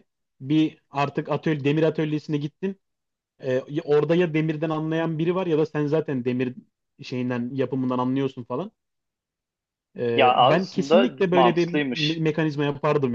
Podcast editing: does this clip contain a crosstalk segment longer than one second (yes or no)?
yes